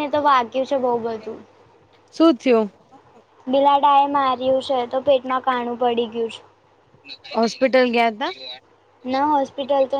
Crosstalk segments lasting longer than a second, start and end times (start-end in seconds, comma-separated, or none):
none